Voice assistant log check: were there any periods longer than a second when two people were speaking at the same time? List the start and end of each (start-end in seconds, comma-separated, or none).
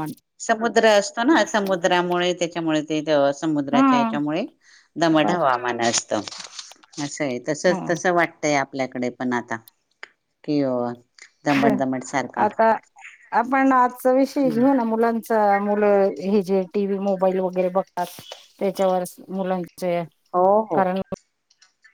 none